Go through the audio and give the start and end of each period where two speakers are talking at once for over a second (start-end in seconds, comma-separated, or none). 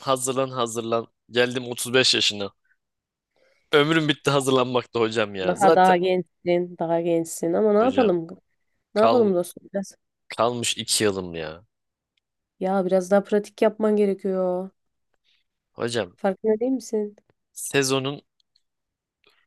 none